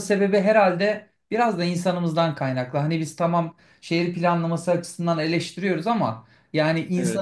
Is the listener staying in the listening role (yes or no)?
yes